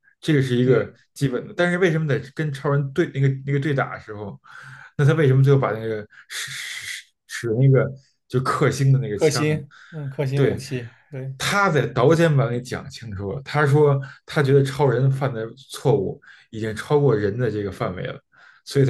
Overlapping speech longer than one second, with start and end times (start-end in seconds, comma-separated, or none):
none